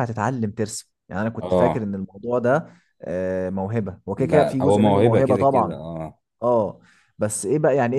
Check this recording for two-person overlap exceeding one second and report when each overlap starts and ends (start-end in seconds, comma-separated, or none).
4.1-5.8